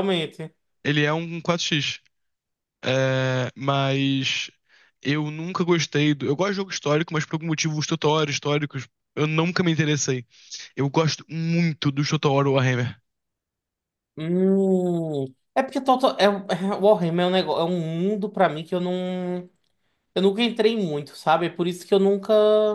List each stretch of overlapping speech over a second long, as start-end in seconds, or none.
none